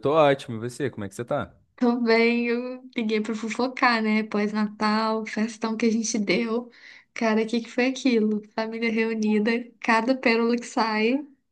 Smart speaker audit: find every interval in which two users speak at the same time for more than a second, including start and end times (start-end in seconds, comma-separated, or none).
none